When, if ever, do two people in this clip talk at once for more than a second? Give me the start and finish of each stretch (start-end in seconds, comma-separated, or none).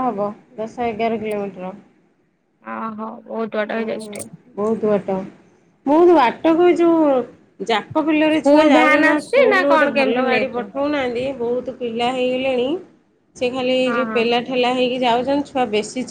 8.3-10.6